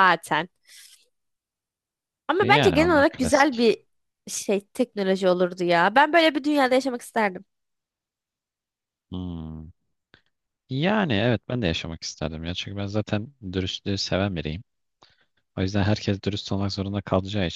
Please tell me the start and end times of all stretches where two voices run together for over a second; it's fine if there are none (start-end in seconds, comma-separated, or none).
2.4-3.7